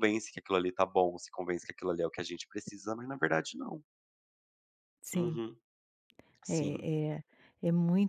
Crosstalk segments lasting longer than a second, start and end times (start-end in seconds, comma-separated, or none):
none